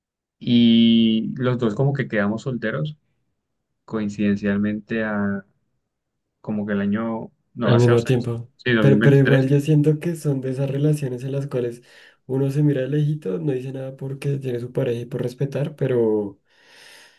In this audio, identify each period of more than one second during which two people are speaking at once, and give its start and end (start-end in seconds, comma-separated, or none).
7.6-9.5